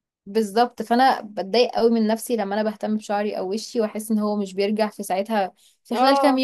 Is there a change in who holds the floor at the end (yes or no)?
yes